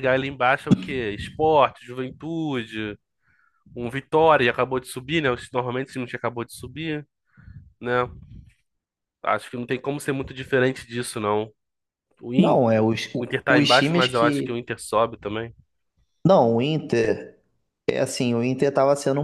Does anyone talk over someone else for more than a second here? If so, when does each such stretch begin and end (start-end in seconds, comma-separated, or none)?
12.4-14.6